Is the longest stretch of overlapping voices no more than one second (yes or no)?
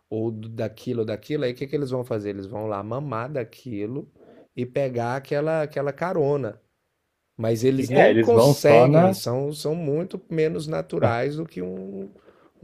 no